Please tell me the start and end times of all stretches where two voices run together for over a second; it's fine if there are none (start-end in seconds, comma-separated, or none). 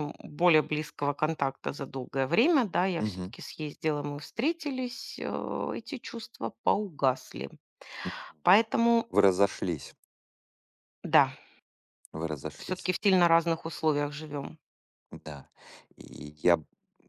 none